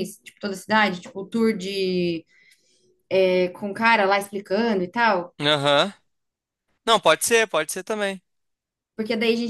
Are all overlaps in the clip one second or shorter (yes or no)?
yes